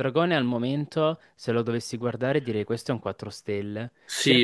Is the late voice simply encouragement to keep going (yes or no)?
yes